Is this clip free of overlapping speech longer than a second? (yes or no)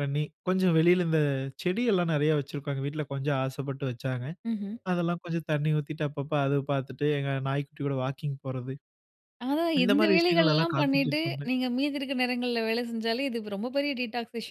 no